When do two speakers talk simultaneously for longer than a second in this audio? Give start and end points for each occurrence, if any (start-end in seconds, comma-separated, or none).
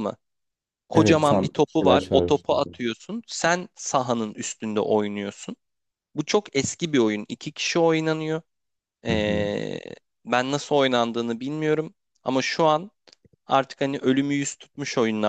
0.9-2.7